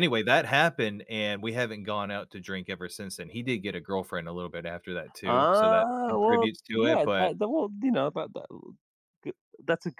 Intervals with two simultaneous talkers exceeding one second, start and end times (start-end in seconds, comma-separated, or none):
5.2-7.3